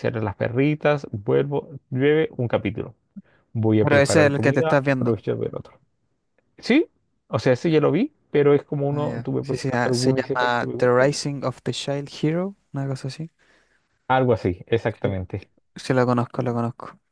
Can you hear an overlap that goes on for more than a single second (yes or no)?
yes